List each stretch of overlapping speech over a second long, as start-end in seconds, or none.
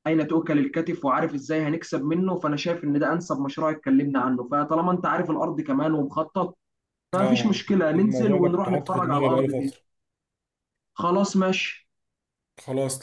7.2-9.8